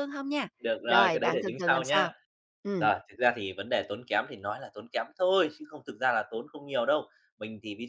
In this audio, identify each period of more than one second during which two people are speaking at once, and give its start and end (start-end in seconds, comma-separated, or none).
0.9-2.1